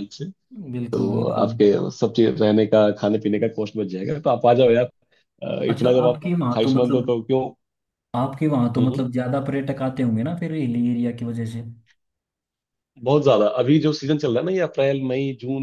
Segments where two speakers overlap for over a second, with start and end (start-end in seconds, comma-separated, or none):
5.7-7.1